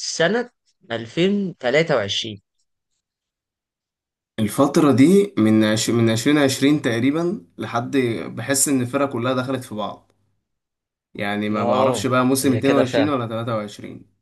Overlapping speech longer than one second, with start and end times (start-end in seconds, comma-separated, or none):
11.6-13.1